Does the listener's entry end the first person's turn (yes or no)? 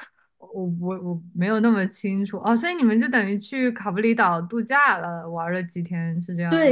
yes